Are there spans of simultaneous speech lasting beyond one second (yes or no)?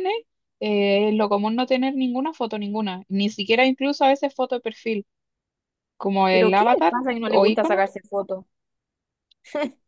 yes